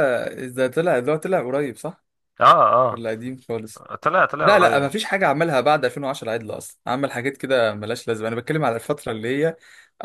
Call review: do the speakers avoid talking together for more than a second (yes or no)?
yes